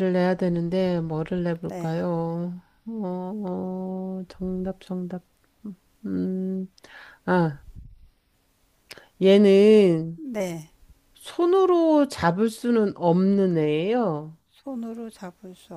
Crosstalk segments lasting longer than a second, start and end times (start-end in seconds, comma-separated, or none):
none